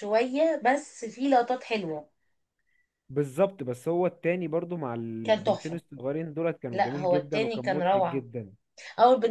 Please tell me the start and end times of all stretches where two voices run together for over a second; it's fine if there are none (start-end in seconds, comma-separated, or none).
6.7-8.2